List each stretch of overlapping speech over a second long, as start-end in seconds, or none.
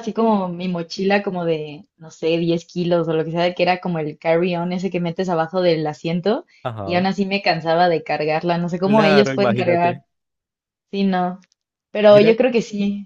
8.8-10.0